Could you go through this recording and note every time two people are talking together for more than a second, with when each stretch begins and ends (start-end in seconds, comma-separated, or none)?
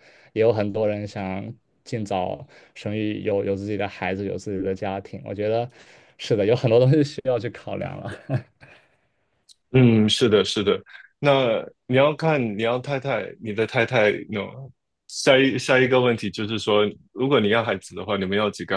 none